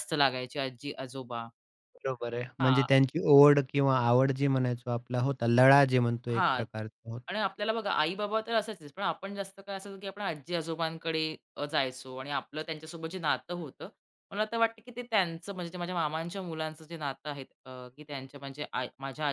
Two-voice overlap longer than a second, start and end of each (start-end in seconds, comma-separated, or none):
none